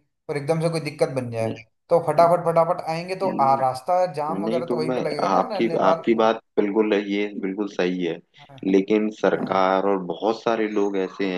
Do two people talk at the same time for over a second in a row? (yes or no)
yes